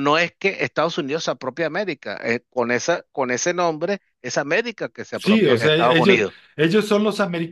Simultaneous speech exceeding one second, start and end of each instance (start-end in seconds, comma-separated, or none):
5.1-6.3